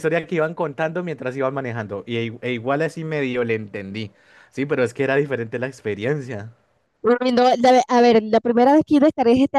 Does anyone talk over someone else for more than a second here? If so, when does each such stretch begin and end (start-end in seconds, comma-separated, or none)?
none